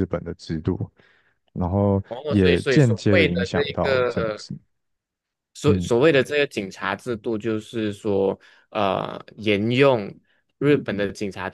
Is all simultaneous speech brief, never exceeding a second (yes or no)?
no